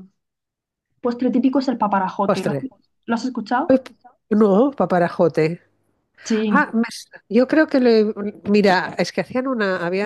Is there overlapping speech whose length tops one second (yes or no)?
no